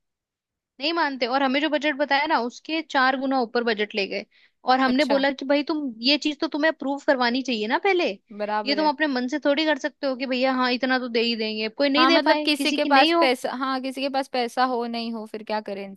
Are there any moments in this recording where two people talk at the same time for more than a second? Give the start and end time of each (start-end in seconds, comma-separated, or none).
12.0-13.3